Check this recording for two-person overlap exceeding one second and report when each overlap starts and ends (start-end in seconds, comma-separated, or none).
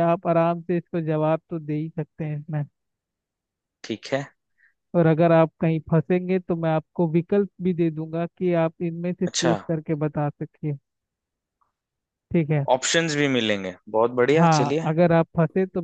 none